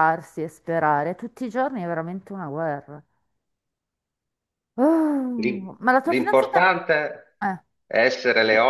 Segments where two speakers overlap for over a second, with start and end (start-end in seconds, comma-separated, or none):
5.3-6.7